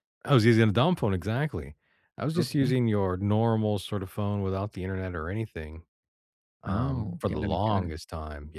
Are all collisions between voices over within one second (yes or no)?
no